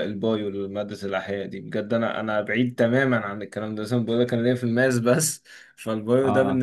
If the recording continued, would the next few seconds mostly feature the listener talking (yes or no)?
no